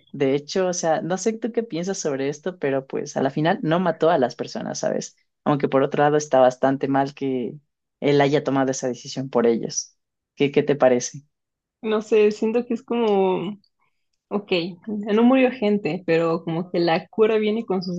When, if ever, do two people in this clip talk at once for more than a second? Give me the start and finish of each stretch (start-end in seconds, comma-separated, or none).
none